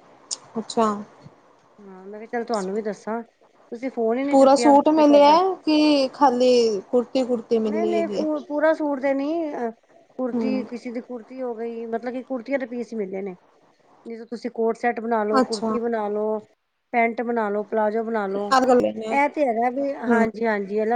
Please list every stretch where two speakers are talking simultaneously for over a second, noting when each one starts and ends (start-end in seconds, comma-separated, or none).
none